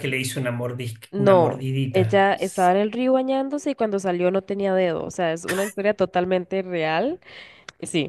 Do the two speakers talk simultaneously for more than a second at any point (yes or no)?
yes